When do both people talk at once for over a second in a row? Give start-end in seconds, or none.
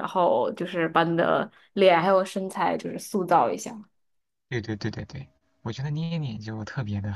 none